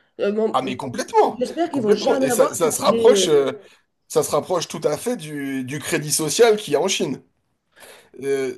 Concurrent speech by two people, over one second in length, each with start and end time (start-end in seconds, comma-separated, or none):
1.3-3.4